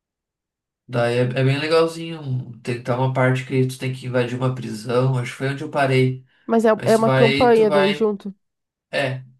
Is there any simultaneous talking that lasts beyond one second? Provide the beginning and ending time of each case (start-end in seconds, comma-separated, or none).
6.7-8.1